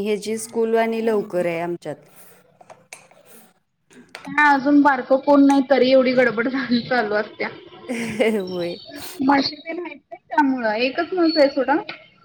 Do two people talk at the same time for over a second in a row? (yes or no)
no